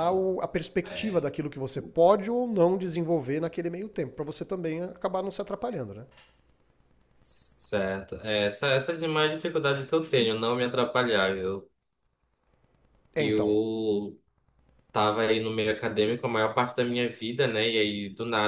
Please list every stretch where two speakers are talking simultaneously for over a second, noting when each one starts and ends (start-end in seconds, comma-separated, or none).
none